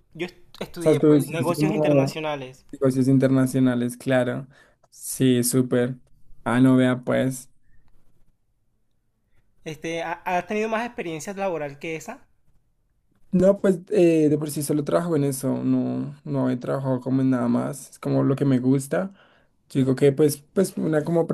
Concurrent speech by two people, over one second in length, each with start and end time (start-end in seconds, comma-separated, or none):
0.8-2.2